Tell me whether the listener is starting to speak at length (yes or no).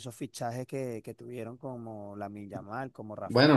yes